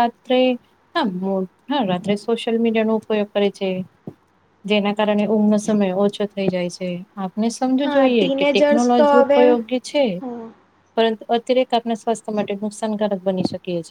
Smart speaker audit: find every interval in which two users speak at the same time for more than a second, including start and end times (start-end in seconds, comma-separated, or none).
7.8-9.4